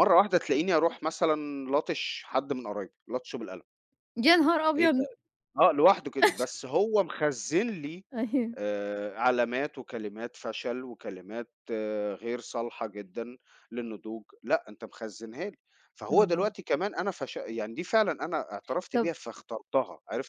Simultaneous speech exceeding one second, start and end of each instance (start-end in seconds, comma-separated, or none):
none